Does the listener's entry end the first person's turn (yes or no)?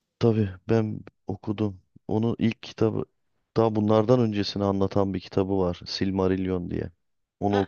yes